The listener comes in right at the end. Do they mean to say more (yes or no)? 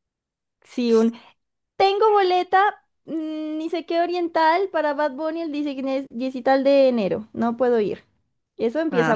yes